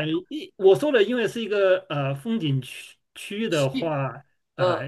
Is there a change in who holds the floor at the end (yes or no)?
no